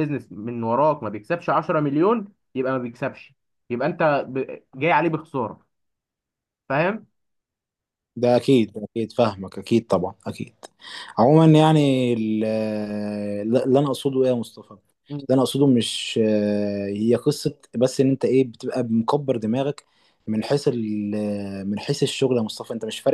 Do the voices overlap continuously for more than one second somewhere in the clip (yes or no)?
no